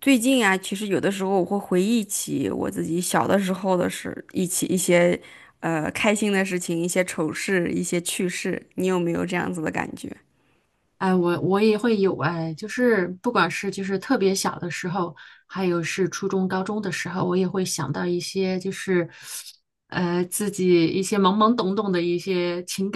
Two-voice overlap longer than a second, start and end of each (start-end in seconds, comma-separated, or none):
none